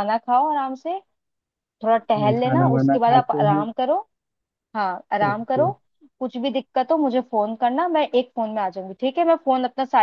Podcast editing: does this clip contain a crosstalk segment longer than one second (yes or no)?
yes